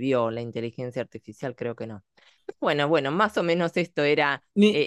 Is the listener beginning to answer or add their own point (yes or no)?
no